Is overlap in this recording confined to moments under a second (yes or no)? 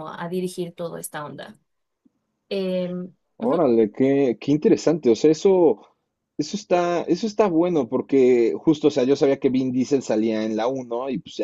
yes